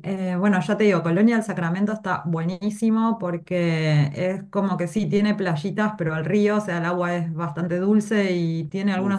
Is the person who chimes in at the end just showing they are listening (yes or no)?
yes